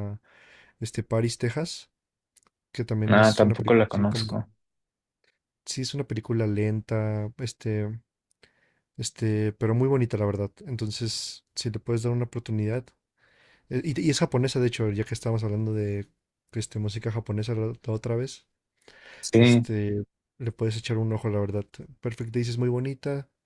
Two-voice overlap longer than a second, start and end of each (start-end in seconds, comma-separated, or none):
3.1-4.3